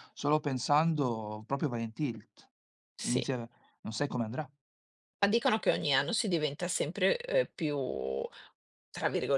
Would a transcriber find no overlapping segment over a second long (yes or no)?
yes